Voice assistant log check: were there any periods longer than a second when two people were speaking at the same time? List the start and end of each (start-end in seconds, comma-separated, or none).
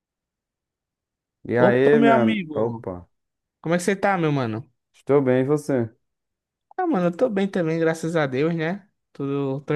1.6-2.9